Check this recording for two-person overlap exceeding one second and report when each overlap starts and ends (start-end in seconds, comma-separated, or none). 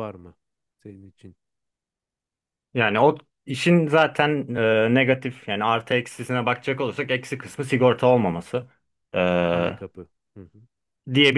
none